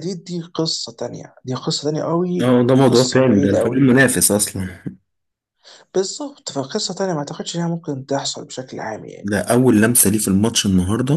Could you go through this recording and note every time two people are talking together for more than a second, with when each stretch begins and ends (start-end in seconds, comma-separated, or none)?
2.4-3.9